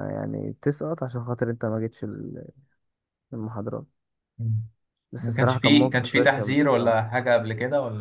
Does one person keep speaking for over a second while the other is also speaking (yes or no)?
yes